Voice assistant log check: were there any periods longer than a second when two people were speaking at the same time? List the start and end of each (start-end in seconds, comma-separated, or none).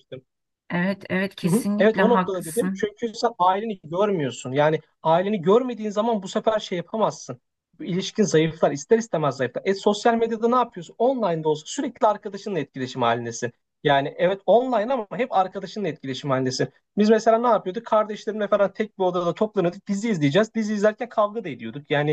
1.4-2.9